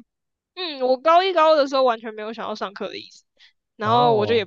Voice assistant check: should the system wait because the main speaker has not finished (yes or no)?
yes